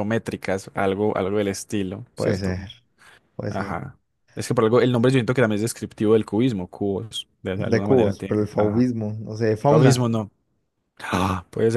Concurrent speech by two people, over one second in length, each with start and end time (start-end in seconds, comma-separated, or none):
7.5-8.9